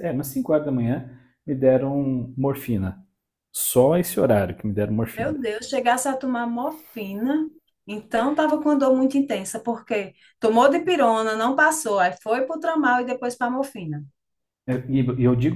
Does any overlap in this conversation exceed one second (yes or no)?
no